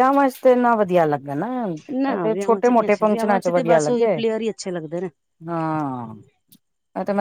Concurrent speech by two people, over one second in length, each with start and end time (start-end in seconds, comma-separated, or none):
2.3-4.2